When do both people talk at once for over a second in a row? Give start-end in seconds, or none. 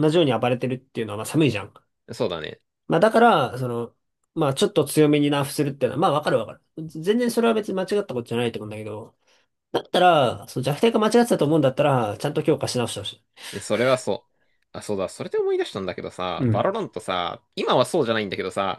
none